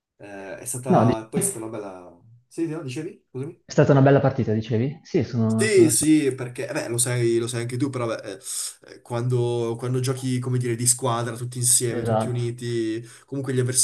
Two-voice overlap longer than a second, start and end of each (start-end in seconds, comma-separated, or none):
none